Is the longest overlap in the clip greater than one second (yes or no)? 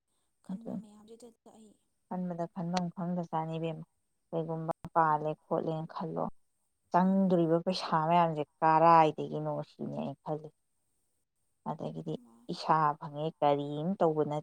no